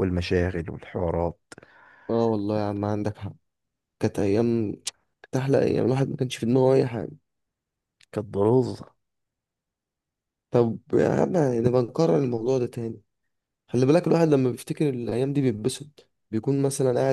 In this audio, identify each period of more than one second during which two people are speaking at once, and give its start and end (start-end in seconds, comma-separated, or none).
none